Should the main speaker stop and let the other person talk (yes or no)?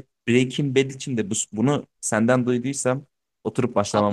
yes